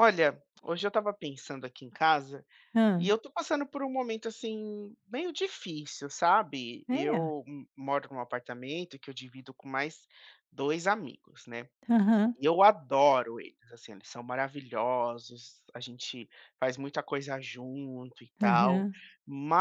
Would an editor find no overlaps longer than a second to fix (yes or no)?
yes